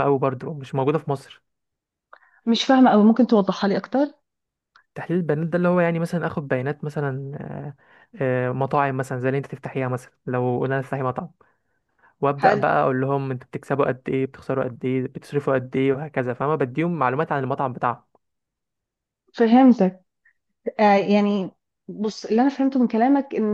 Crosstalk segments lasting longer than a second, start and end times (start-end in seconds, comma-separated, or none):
none